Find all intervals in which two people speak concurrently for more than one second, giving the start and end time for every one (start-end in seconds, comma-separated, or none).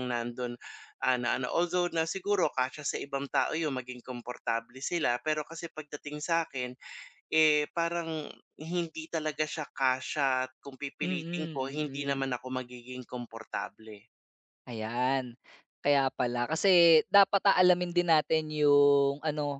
11.0-12.3